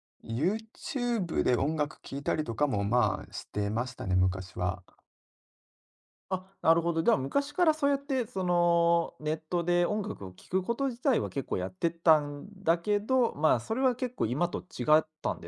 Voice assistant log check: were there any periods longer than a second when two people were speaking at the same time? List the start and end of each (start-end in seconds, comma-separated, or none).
none